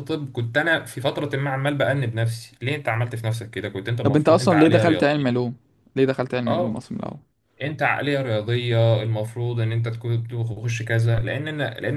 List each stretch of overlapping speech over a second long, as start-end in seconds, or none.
4.0-5.4